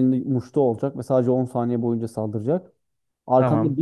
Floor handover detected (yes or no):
no